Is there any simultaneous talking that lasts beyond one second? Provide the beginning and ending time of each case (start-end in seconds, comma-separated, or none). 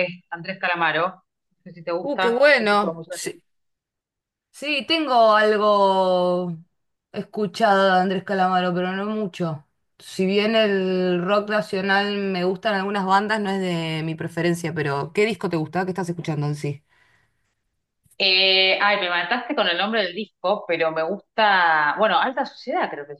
2.0-3.4